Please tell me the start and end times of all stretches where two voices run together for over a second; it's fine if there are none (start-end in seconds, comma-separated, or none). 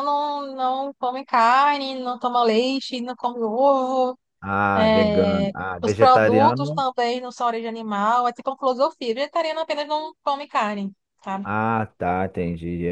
4.7-6.8